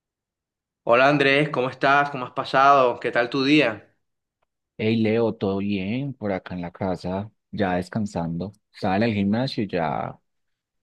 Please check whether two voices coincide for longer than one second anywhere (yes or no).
no